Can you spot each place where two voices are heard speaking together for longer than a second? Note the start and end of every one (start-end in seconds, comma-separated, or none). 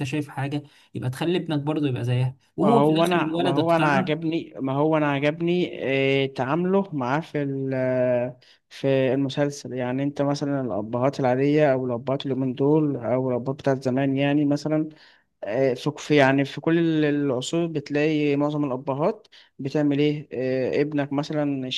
2.6-4.1